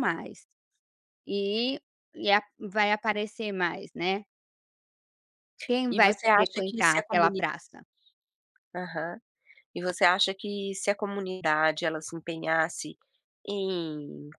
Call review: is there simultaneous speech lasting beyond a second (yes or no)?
yes